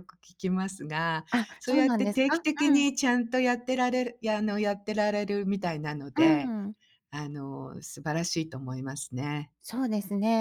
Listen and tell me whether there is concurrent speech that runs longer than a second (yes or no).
yes